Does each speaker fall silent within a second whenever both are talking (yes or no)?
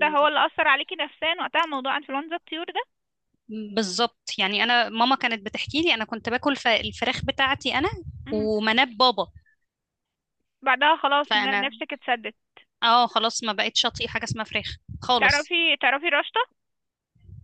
yes